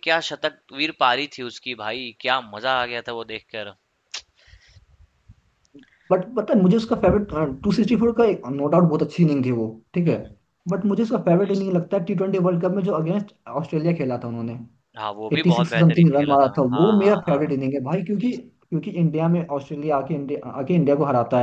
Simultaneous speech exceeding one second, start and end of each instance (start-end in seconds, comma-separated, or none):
15.3-17.6